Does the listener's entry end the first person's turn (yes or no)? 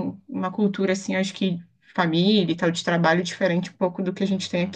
yes